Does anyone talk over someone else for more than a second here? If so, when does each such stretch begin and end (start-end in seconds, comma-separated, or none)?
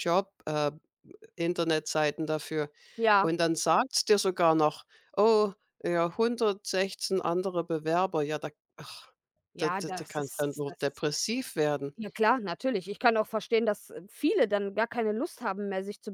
9.6-11.0